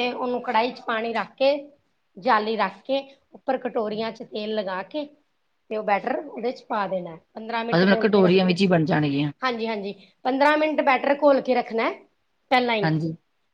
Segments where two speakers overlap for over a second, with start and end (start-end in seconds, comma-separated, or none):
none